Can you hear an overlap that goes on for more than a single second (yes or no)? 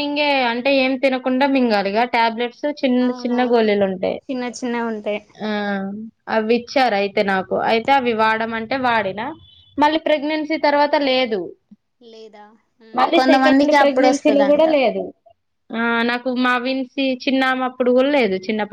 yes